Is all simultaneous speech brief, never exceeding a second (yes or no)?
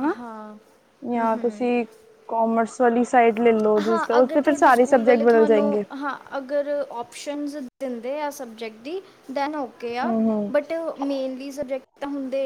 no